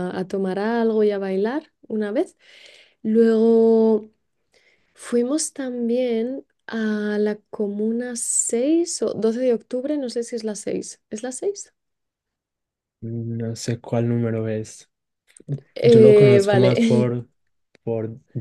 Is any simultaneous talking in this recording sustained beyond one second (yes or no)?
yes